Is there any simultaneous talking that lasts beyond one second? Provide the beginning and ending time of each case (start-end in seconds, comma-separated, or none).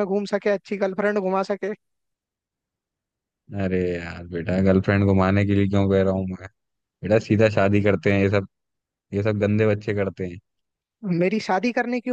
none